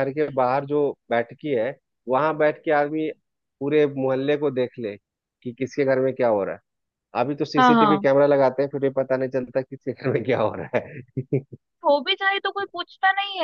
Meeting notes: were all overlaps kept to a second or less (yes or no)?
yes